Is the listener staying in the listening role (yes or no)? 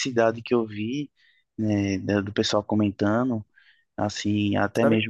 yes